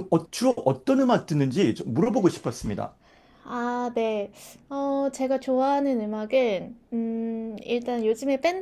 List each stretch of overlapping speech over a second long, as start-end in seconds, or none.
none